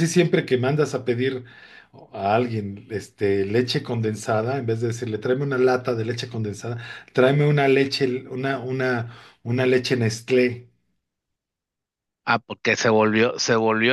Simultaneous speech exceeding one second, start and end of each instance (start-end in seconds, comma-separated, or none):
none